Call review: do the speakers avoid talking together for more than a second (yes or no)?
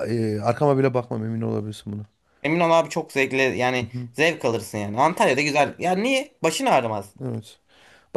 yes